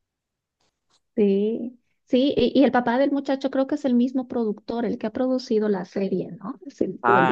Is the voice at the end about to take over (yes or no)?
yes